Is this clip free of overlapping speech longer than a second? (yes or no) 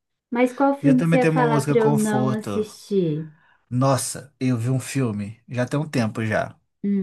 no